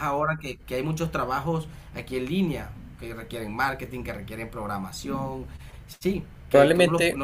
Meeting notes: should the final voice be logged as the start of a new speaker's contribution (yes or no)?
no